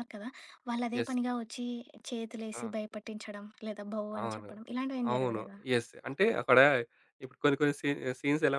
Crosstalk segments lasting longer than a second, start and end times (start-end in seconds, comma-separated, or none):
none